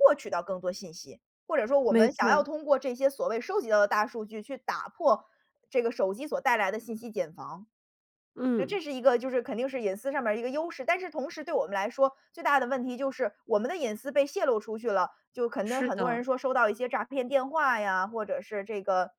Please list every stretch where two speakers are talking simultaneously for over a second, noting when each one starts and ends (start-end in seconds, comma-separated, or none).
none